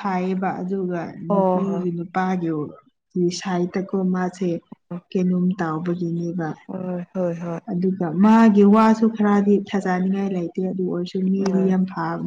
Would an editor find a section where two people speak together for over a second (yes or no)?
no